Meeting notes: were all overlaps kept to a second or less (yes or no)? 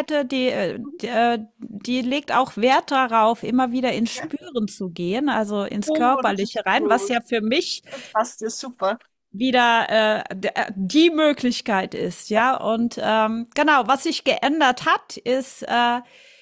no